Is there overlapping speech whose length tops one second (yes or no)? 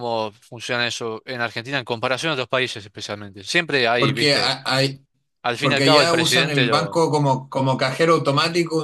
yes